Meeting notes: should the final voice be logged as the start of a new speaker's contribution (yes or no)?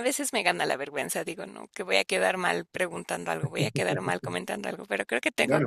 yes